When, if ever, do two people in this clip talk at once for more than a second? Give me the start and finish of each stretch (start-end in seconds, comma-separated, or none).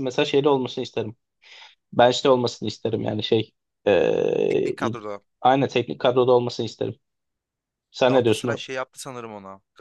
none